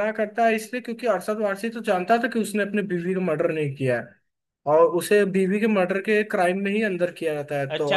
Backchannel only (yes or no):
no